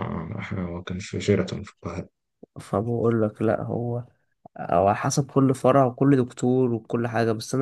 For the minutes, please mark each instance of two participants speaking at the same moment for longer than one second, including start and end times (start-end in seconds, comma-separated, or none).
none